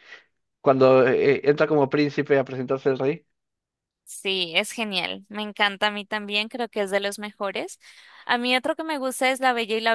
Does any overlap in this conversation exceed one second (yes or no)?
no